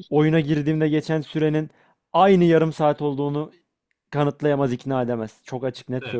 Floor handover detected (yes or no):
yes